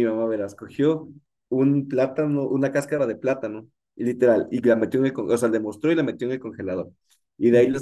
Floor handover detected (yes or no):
no